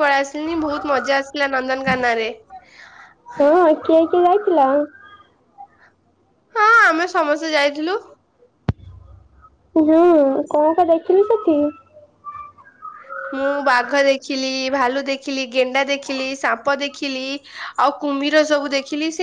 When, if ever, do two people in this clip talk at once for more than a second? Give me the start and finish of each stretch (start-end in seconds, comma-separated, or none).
none